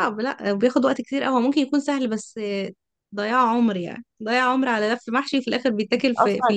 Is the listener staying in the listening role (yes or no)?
no